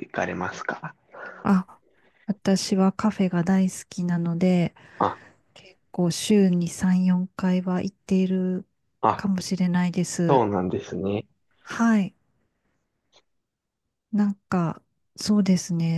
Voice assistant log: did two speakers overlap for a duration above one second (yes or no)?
no